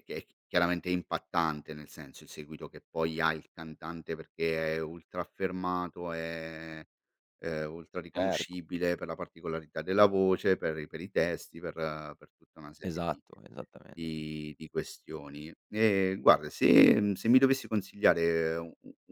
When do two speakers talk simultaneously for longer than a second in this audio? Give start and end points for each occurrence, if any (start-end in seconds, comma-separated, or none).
none